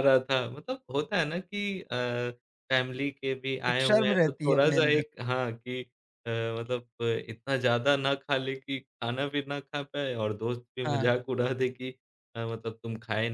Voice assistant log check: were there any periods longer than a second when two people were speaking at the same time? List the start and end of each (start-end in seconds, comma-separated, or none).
3.7-5.0